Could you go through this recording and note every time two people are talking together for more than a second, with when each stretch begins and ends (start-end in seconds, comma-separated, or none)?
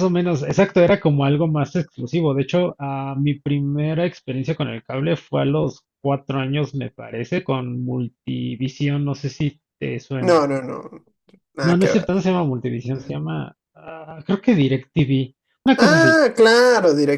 none